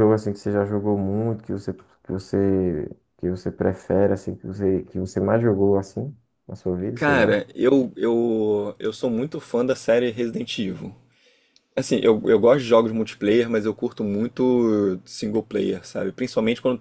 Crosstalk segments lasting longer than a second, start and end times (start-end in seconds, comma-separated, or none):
none